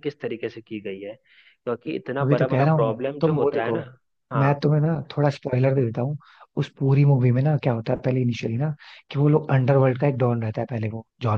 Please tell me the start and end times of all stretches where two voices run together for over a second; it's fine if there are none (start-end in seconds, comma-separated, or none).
2.2-3.8